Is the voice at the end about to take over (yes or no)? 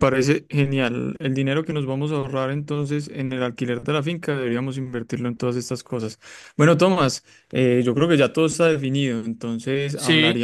no